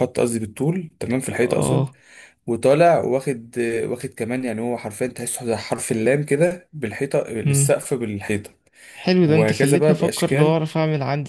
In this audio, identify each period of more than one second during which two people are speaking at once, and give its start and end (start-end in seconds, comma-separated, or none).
9.2-10.6